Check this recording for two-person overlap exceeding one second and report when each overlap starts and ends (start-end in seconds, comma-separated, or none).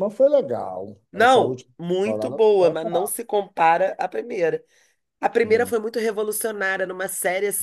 1.1-3.2